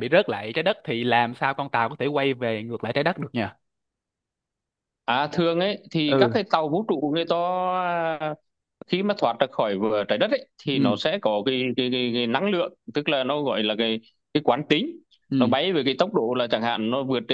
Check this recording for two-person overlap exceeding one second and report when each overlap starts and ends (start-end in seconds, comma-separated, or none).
none